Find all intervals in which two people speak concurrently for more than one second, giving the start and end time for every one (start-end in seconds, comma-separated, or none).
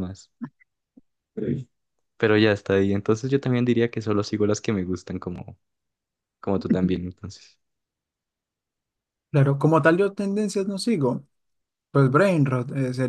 none